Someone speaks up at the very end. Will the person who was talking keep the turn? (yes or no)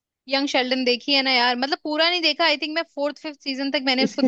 no